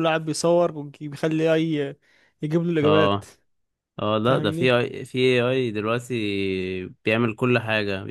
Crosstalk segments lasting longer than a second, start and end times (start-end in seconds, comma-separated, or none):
none